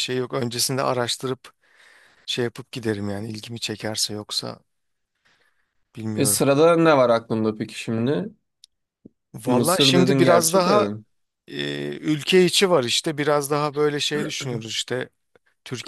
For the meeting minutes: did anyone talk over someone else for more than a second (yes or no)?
yes